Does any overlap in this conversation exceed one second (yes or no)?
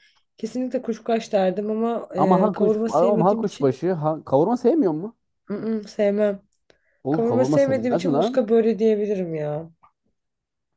yes